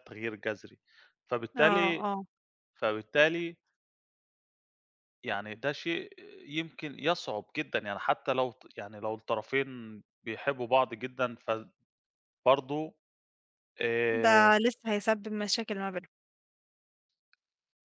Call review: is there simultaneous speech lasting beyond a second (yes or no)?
no